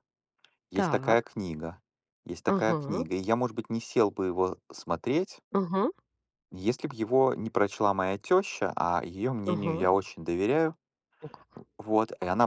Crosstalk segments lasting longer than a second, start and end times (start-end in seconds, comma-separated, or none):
none